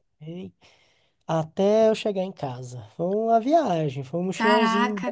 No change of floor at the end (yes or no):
no